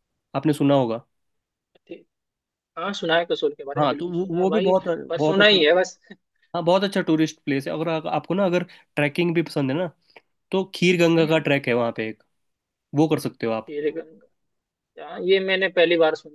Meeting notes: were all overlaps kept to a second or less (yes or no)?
no